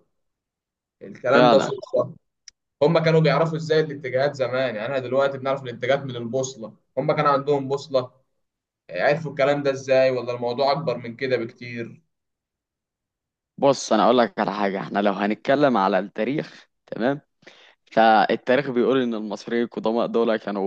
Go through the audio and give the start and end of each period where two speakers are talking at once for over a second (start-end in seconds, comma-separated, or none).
none